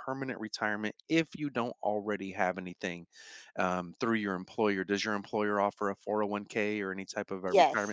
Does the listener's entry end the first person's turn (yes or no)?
yes